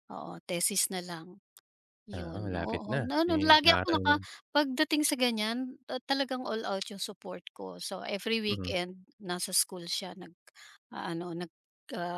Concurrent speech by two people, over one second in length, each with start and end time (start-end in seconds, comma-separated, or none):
2.2-4.1